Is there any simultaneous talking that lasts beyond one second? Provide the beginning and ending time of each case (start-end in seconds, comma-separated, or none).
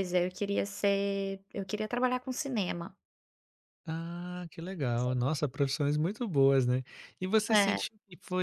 none